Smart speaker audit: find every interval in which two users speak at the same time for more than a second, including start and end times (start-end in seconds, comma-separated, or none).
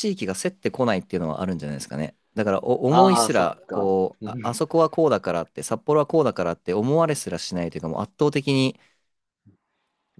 2.9-4.6